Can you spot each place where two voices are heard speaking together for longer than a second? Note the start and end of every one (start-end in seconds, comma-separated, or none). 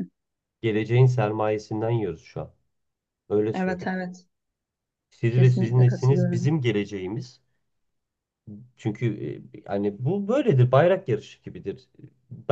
5.3-6.6